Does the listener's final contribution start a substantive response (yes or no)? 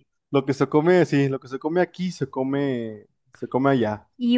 yes